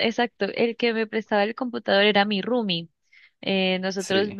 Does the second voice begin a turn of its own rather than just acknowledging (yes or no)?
no